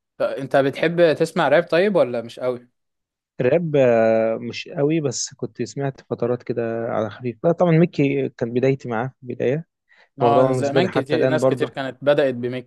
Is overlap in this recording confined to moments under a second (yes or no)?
no